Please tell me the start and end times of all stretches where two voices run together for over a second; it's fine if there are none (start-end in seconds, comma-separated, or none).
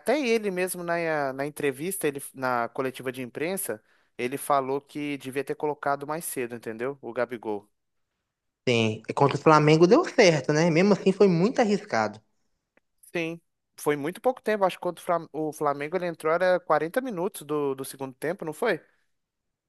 none